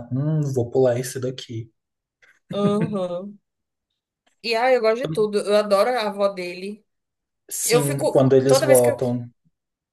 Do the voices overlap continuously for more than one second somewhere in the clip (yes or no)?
yes